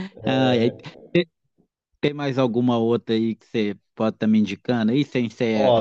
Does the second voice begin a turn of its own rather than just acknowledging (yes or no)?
yes